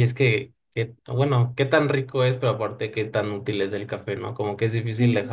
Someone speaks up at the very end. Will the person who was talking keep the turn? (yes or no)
yes